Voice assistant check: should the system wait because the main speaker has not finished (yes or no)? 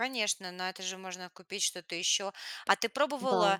yes